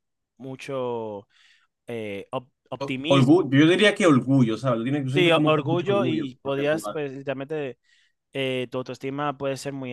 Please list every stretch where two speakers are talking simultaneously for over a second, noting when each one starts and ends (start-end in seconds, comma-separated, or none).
5.1-7.0